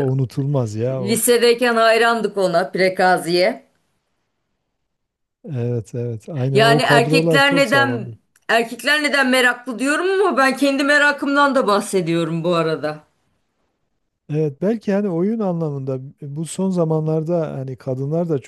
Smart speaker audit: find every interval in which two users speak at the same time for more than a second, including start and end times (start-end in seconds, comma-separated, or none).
6.5-8.2